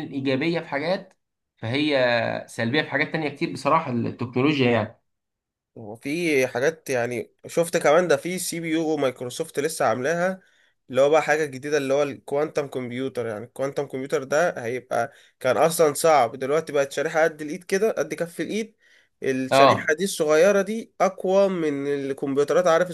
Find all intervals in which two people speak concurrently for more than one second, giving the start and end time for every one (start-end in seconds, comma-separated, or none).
none